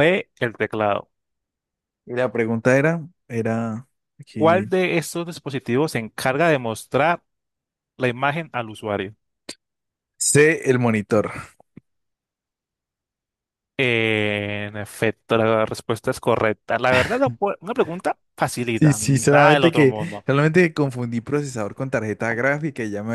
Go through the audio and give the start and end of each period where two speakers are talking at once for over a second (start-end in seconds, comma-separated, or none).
18.7-20.2